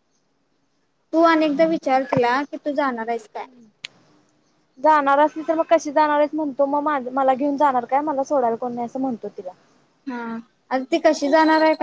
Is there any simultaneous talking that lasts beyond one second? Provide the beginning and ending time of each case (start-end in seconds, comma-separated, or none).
none